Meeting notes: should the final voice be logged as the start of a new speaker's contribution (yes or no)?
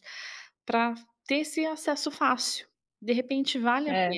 no